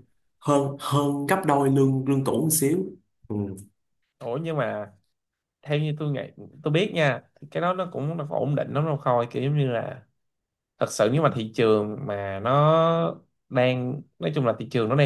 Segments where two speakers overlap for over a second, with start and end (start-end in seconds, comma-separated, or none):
none